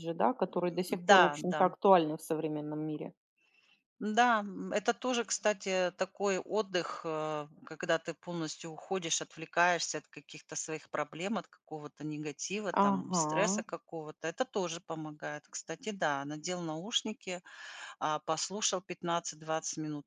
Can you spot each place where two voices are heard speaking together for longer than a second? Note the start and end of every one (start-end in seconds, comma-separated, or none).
none